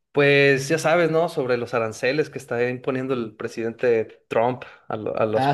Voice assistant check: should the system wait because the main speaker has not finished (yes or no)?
no